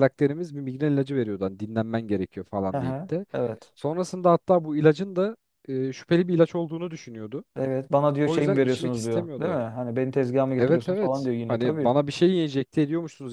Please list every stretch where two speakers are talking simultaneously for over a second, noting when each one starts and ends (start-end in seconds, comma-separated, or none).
8.2-9.6, 10.6-11.9